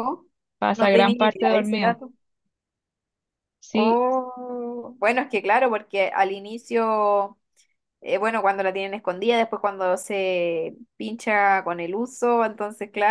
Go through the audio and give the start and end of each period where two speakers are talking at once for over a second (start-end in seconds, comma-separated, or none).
0.8-2.0